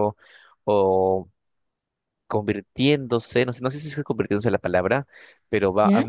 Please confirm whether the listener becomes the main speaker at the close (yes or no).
no